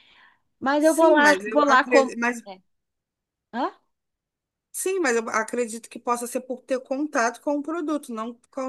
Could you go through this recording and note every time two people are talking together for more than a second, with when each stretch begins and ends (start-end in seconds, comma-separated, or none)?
0.8-2.1